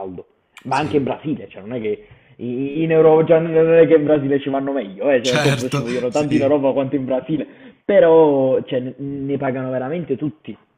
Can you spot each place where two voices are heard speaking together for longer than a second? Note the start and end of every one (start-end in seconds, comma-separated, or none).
5.2-6.6